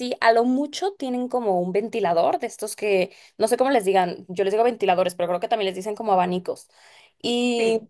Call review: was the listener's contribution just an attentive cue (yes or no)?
yes